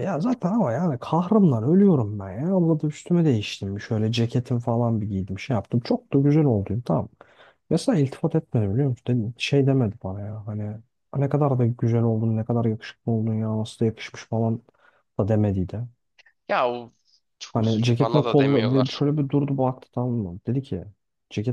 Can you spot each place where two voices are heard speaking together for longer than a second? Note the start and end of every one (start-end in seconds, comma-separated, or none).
17.5-19.0